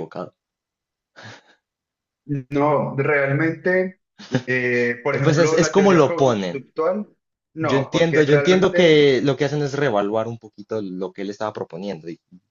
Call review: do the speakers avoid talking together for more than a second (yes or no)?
no